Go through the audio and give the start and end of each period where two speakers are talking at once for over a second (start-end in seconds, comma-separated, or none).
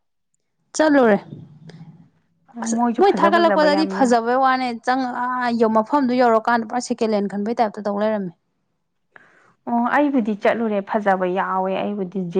2.6-4.2